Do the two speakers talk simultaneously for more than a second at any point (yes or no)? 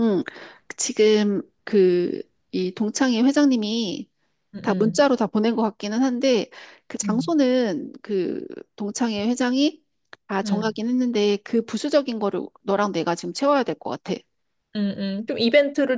no